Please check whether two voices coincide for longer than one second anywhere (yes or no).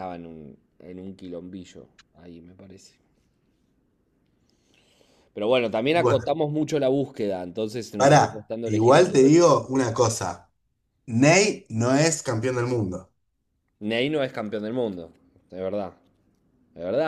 yes